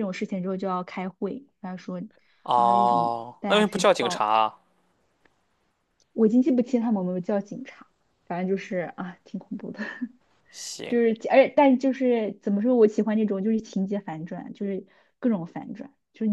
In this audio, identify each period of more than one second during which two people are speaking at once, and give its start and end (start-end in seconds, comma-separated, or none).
2.5-4.3